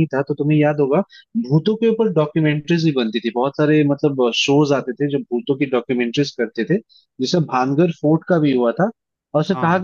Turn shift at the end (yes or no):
no